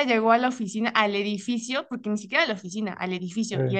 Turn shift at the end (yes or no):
no